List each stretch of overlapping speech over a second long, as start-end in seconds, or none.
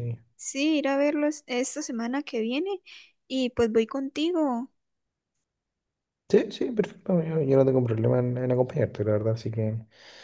none